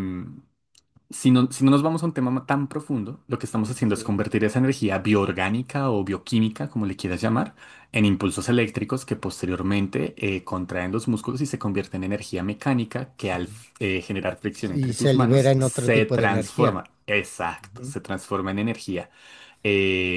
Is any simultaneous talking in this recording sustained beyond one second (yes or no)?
yes